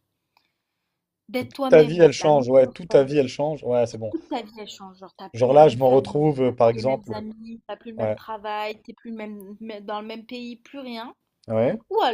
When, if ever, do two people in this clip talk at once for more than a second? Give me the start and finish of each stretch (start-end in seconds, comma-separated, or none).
1.4-3.1, 5.3-7.2